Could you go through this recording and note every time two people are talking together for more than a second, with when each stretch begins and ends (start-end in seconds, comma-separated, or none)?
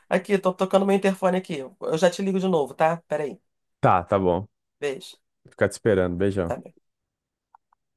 none